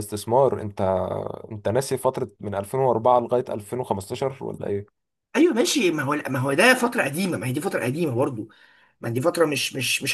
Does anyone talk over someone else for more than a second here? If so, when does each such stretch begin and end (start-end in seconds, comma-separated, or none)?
none